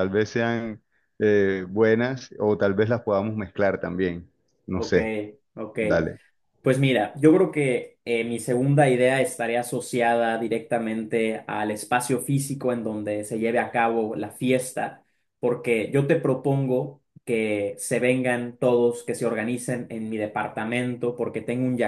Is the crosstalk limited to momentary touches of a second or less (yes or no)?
yes